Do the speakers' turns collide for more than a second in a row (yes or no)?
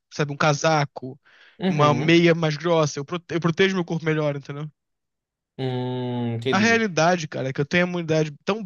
no